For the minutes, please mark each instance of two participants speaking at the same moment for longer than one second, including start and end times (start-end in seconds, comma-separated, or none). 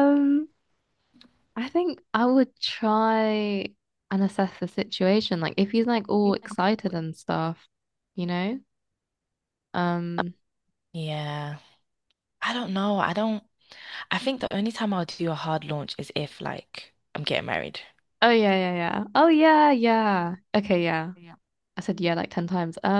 none